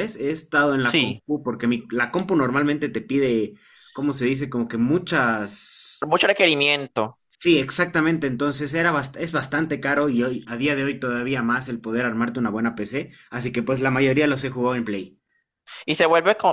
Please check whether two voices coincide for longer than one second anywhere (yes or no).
no